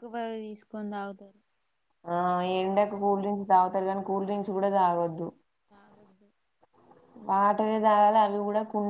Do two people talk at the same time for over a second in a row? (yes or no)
no